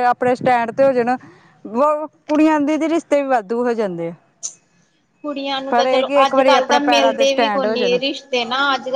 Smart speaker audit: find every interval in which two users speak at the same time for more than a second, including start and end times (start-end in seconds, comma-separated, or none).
5.7-8.0